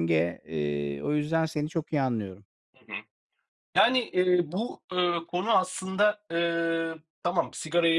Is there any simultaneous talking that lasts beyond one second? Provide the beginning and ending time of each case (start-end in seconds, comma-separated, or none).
none